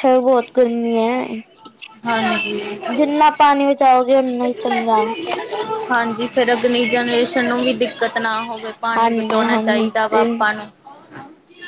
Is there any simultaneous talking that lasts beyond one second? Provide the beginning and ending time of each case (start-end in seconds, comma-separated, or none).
9.0-10.3